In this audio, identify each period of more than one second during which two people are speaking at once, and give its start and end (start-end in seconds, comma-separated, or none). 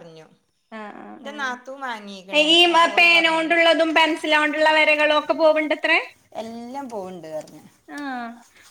1.2-3.5